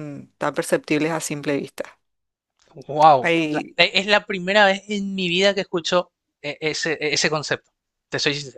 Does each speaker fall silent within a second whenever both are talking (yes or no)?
yes